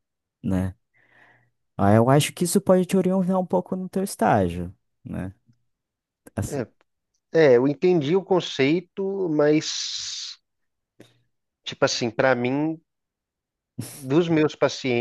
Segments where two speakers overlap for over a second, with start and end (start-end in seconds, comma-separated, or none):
none